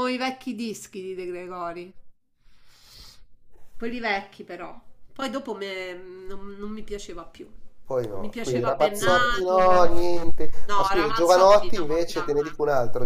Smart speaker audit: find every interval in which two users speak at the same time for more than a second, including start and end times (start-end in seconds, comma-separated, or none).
8.1-9.9, 10.7-12.2